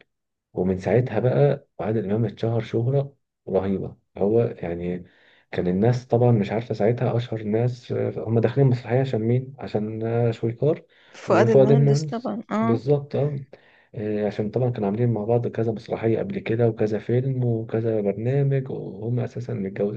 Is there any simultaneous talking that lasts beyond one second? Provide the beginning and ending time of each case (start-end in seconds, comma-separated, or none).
11.3-12.8